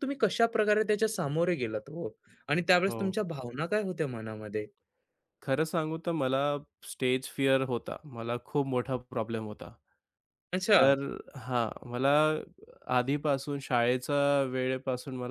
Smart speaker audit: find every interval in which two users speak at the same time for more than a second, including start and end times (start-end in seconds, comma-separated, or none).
none